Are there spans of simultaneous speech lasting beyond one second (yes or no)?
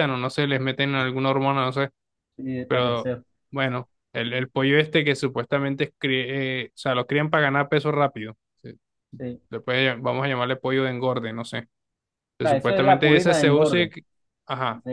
yes